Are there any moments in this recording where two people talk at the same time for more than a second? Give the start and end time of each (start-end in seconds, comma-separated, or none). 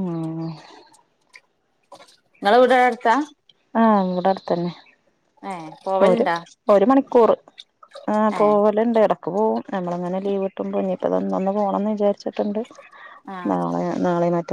none